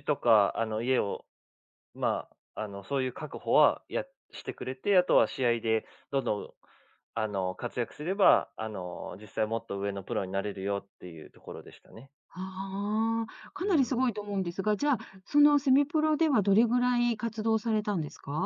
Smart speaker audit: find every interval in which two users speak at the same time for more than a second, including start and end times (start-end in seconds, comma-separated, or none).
none